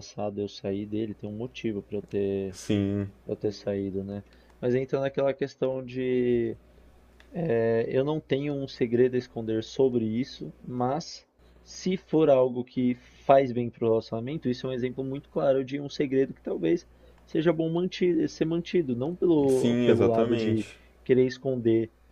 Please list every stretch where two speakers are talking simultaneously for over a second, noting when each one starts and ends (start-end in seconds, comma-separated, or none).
19.5-20.7